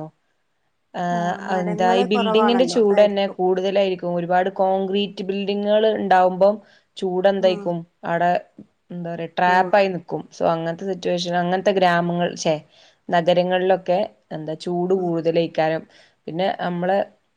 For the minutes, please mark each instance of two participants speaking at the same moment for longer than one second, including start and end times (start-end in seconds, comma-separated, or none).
1.5-3.4